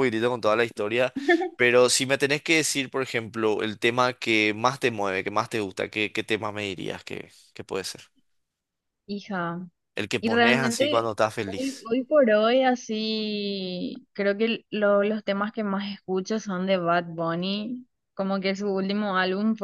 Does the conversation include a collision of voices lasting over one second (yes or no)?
yes